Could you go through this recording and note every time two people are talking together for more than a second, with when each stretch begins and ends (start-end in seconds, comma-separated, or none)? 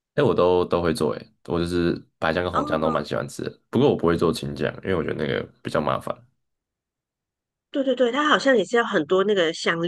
none